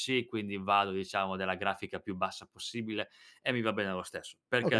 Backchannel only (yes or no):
no